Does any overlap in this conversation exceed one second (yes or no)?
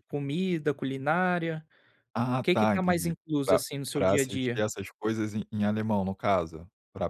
yes